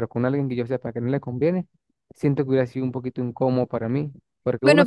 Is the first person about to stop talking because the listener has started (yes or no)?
yes